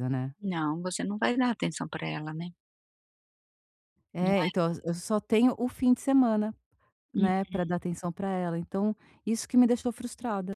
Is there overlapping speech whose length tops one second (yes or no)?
no